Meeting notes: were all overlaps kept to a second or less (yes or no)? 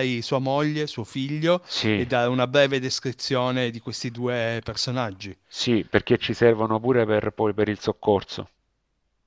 yes